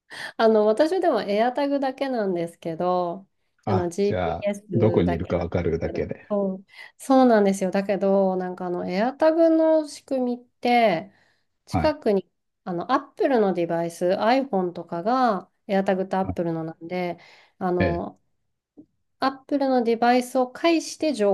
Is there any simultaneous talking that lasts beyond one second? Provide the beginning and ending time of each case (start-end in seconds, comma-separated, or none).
3.6-6.3